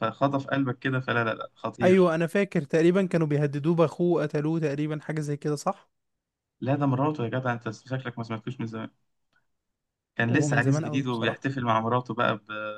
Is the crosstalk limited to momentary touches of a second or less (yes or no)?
no